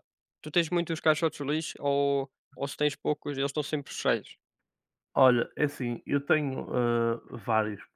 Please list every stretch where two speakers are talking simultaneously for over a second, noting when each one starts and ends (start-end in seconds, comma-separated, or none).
none